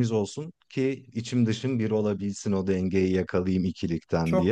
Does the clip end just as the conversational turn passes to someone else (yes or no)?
yes